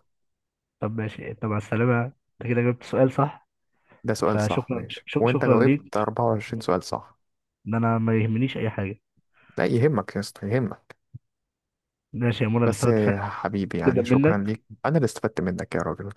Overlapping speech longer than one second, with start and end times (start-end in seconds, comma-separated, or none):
4.2-5.9